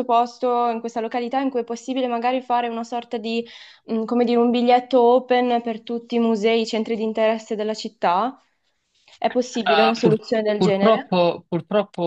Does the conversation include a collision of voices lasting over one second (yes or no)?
yes